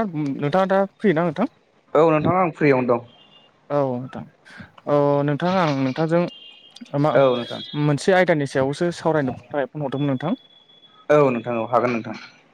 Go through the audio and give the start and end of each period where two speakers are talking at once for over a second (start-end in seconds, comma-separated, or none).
none